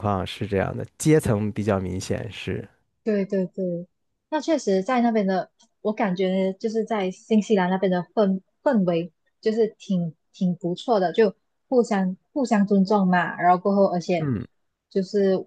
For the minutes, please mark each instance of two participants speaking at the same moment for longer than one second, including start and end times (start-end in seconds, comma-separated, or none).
none